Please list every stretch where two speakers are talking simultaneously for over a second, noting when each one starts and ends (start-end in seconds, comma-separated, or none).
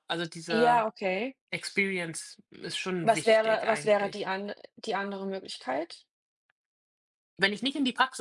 3.0-4.3